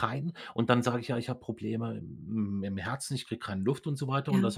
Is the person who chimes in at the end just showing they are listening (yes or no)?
yes